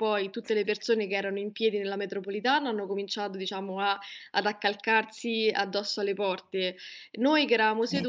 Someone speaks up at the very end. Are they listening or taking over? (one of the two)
listening